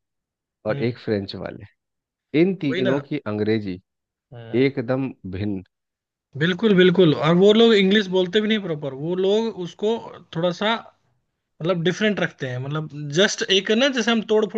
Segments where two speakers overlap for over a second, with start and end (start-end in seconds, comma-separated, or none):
none